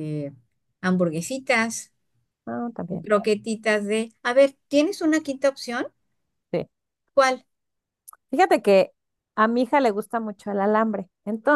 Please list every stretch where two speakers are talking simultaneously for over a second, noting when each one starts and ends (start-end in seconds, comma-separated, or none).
none